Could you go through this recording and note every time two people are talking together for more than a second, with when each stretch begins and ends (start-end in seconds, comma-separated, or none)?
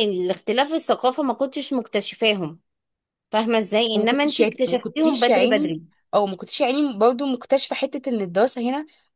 3.9-5.7